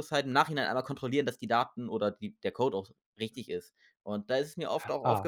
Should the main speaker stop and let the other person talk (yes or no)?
no